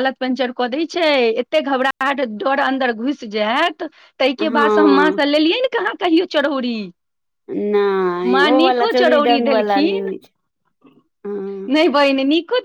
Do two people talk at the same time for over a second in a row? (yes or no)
yes